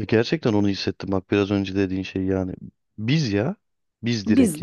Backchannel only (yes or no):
no